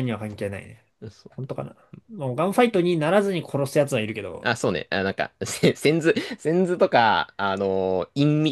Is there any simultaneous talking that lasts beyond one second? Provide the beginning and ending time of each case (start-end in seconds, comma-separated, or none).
none